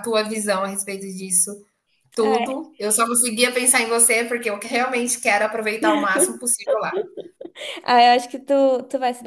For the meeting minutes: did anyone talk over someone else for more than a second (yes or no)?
no